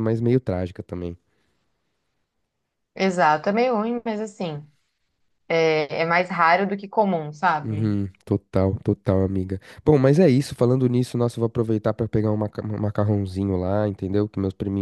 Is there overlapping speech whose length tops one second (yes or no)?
no